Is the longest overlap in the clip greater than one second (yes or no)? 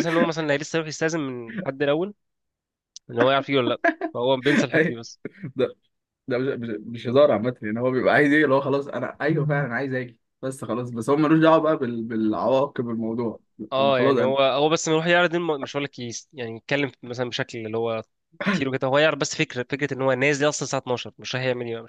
no